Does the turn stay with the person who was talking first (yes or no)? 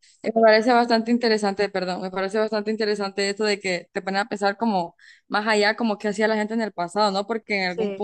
yes